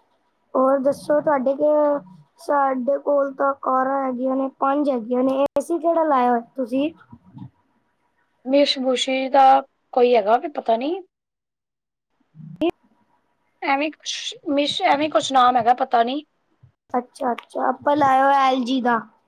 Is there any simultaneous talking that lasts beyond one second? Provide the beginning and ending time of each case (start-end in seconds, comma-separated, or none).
none